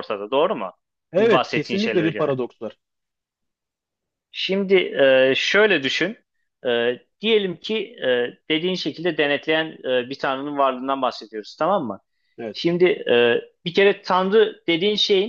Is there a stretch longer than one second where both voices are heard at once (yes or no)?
yes